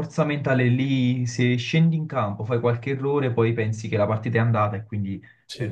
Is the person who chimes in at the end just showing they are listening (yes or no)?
yes